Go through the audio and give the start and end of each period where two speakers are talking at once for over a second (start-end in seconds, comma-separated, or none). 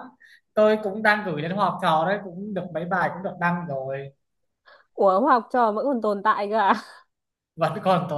none